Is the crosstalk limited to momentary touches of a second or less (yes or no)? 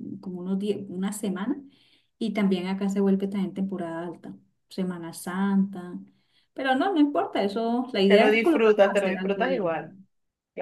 no